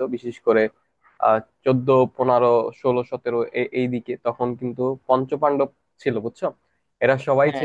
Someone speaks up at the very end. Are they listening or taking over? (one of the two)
listening